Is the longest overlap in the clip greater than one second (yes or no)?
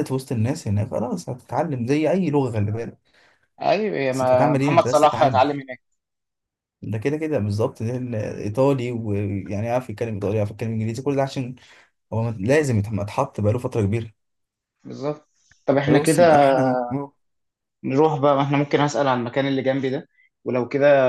yes